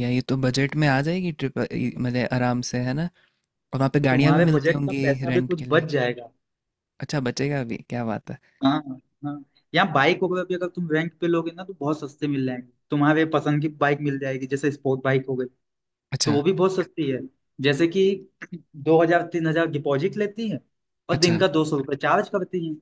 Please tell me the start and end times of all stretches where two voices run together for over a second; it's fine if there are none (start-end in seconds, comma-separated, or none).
4.1-5.8